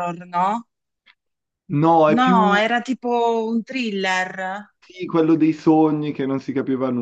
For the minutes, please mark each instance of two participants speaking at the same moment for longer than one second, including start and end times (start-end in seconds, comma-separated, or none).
none